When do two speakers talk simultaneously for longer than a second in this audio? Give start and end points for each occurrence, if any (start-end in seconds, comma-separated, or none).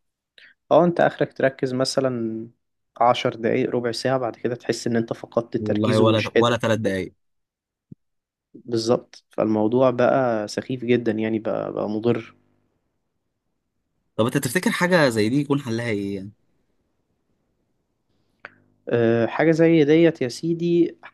5.6-7.0